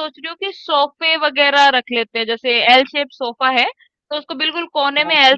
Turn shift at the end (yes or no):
no